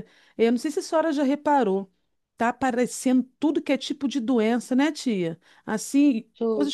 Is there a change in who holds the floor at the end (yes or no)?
no